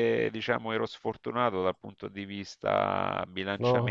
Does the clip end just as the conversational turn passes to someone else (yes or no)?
no